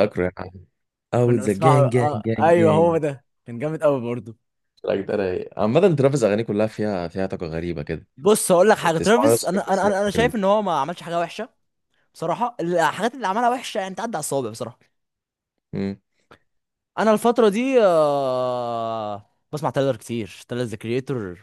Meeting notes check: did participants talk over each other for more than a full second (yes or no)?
yes